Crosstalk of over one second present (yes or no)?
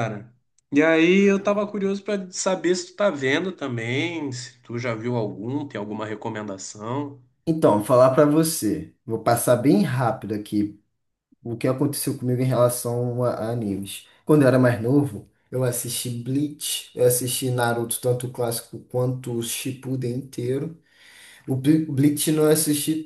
no